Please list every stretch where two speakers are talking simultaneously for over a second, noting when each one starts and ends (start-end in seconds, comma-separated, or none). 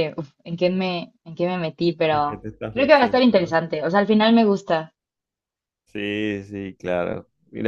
2.1-3.5